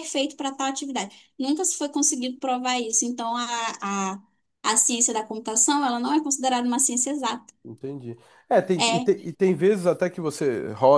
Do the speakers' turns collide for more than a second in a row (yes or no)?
no